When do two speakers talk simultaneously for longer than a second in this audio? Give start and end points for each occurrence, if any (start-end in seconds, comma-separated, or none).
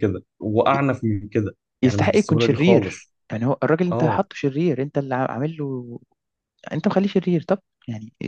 1.8-3.1